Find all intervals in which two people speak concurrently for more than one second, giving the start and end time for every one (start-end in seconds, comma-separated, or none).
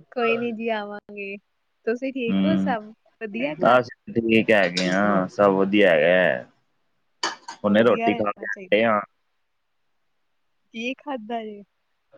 7.7-9.0